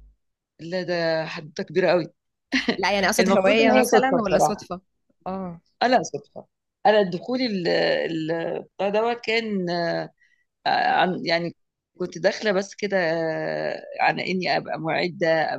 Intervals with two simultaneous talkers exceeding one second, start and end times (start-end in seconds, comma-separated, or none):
3.2-4.7